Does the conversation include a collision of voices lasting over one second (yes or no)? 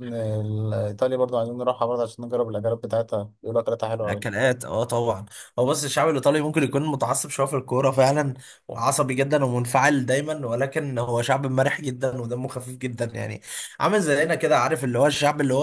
no